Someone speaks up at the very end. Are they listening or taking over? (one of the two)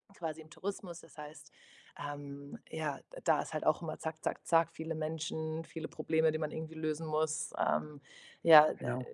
listening